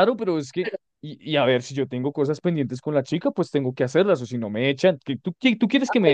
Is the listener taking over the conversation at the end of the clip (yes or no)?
yes